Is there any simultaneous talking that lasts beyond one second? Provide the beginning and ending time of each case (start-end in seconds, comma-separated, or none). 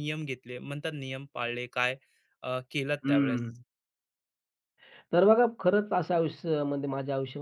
none